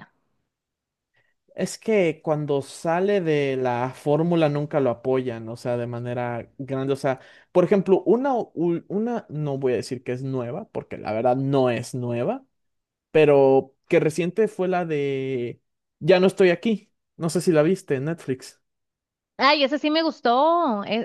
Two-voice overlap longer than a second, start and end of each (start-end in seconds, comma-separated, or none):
none